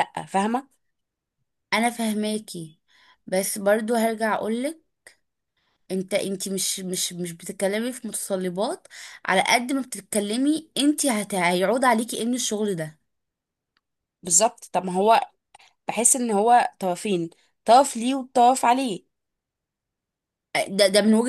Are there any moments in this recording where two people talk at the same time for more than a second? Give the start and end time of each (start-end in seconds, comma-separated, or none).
none